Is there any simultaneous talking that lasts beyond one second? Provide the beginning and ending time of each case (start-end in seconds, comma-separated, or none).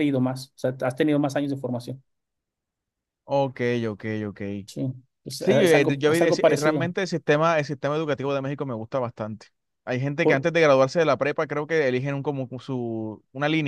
5.4-6.9